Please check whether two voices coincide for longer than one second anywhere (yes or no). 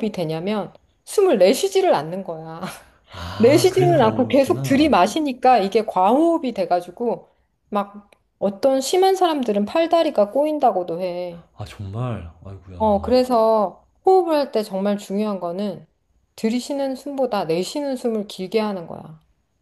yes